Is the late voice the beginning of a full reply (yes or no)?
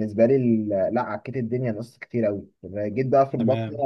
no